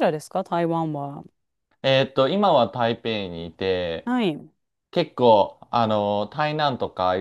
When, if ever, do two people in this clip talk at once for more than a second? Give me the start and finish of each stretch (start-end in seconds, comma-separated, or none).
none